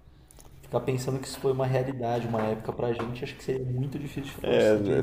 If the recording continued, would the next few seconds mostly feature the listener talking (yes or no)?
yes